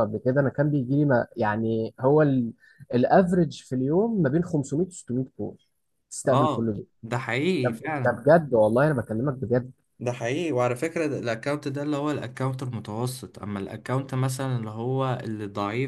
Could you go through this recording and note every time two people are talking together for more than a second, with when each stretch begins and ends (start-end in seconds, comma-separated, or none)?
none